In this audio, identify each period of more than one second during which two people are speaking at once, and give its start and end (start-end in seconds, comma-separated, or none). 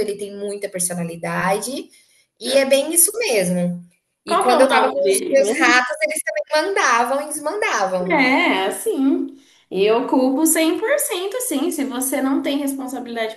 4.3-5.8